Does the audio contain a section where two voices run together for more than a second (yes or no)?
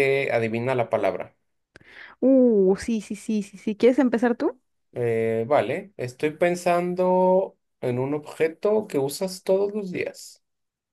no